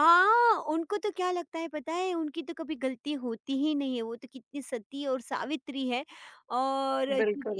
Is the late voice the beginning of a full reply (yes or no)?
no